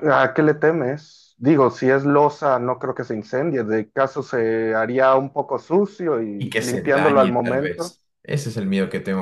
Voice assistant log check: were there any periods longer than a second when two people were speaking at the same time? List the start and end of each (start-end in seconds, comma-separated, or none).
6.4-8.0